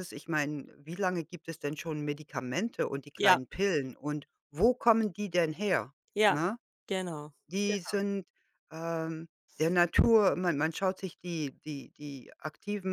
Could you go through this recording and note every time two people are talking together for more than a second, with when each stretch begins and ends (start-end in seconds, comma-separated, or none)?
none